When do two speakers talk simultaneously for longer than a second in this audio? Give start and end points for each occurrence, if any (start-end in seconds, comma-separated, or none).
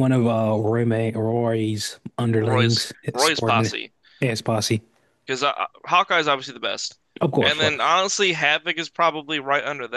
2.4-3.7